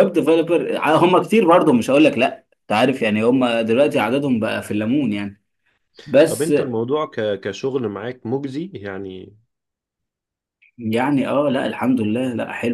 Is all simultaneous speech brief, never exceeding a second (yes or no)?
yes